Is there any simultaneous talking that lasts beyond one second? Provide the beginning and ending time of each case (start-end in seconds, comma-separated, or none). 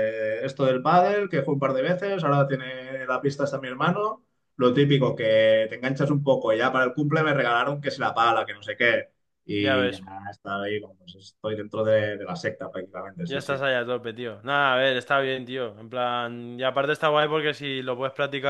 none